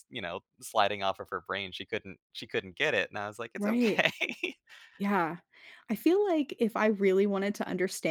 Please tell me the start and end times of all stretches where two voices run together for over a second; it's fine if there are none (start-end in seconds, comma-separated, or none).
none